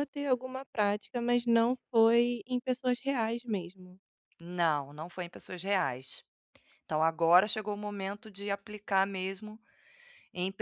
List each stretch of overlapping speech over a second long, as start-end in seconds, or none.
none